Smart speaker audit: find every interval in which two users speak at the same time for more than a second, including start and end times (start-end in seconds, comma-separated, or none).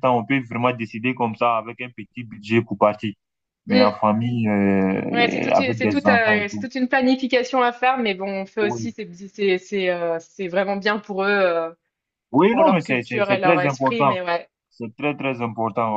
5.1-6.7, 12.5-14.2